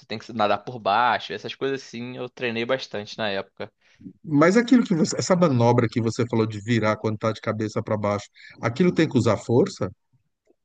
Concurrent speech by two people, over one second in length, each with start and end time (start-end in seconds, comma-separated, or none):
none